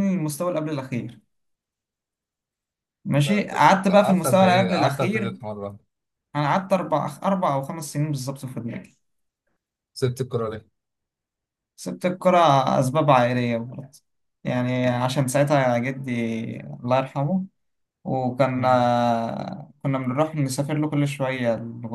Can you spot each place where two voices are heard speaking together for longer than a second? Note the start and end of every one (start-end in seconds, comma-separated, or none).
3.2-5.3